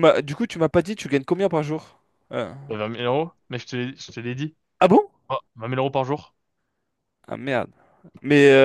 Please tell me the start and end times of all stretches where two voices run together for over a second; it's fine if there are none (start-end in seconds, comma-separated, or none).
none